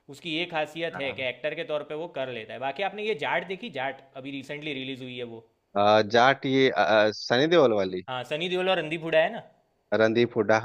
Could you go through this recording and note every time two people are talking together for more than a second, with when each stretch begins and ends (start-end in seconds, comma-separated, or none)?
none